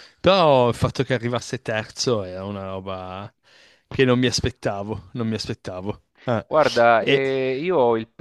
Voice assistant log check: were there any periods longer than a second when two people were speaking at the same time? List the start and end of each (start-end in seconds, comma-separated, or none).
none